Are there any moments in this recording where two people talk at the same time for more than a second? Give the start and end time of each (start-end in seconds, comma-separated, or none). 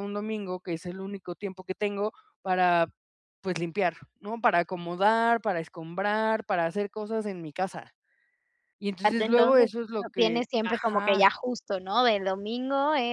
9.2-11.3